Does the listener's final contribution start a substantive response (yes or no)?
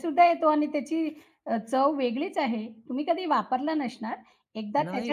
no